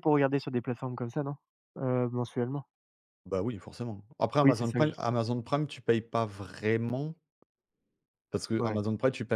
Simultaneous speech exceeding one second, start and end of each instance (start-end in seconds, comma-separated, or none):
none